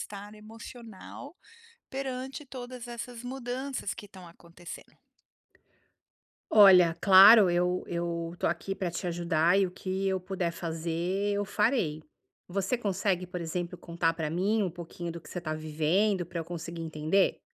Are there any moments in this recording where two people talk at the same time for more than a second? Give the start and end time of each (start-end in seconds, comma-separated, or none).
none